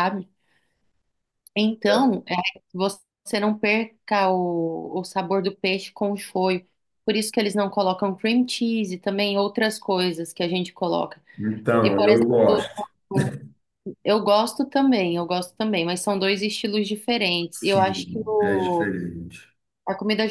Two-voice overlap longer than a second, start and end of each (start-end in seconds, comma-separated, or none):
17.6-18.9